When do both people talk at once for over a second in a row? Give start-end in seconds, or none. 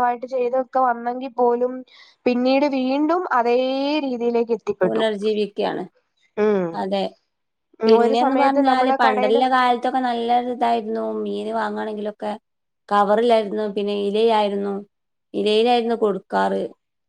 8.0-9.4